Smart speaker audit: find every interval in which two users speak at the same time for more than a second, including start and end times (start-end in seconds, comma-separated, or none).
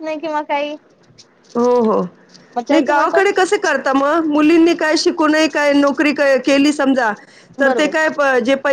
none